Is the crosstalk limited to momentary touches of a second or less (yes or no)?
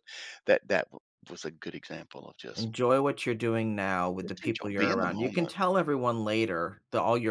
no